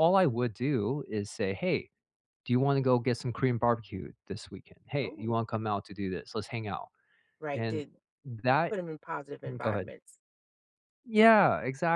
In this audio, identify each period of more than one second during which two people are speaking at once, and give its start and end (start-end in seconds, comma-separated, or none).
none